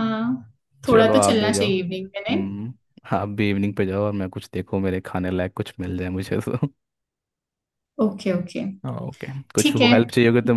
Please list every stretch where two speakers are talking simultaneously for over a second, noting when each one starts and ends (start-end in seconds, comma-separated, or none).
0.9-2.5